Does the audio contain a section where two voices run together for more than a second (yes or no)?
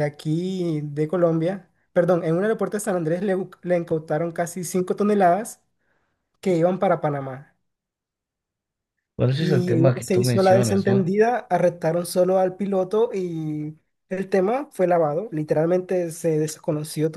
yes